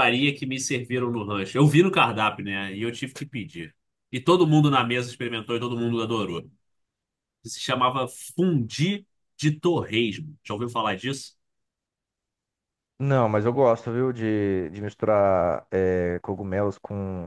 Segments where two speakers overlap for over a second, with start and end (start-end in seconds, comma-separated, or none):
none